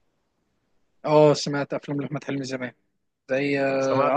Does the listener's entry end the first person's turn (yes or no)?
yes